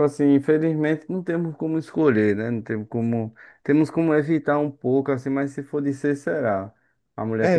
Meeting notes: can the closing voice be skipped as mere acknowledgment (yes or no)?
yes